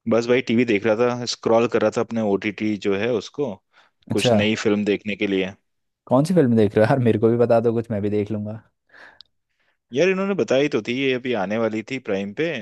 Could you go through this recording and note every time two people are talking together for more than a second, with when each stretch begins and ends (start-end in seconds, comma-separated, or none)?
none